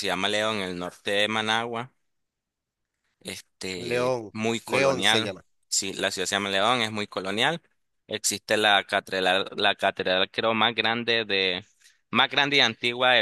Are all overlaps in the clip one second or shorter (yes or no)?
no